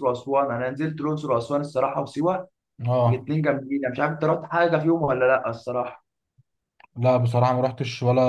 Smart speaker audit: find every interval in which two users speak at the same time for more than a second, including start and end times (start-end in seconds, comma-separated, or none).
none